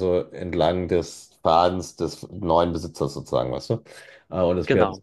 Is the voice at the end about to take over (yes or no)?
no